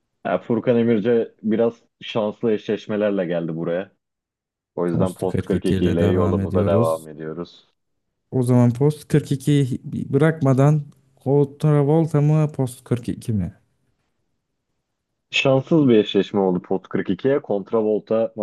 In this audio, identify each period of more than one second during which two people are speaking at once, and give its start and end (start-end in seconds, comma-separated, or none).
4.9-7.1